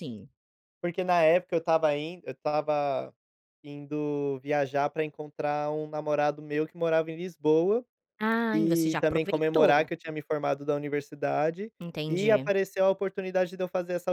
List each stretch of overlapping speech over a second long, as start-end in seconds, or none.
8.5-9.9